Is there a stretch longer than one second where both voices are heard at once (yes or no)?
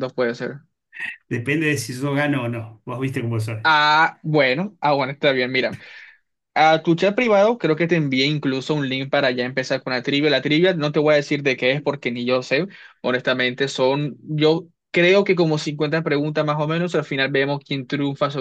no